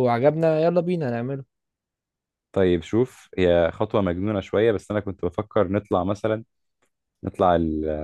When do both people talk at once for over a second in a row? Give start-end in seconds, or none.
none